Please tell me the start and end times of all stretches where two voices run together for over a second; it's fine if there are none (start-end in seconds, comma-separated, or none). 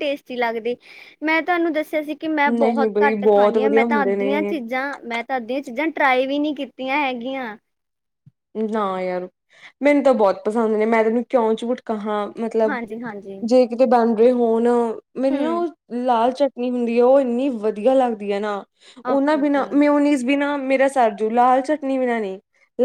2.6-4.5